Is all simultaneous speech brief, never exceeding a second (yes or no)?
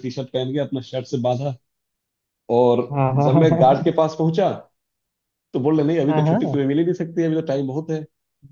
yes